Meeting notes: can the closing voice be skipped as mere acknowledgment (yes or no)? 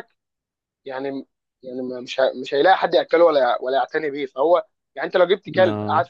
yes